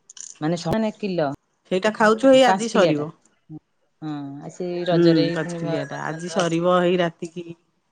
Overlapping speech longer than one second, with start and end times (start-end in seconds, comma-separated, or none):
5.0-6.7